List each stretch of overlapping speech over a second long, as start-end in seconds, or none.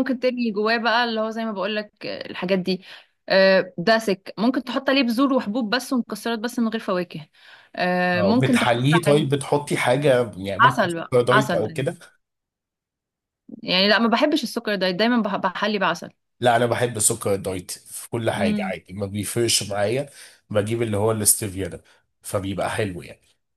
8.2-9.4, 10.6-11.9